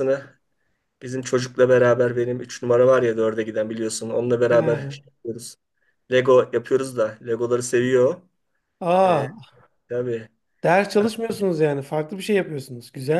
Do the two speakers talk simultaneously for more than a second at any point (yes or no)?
no